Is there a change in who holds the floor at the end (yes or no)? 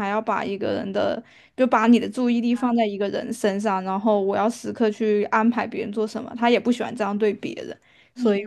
yes